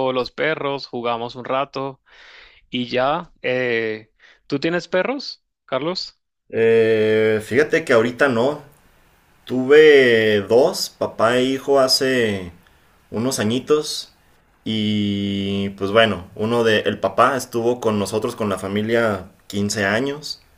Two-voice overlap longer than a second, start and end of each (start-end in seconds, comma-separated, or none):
none